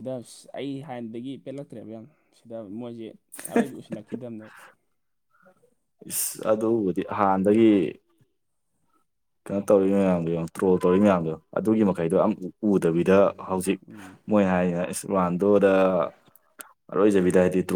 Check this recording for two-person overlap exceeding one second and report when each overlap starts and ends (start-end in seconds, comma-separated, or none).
none